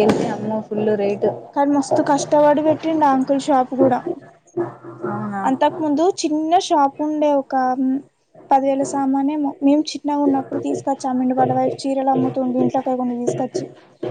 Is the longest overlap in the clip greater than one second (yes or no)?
no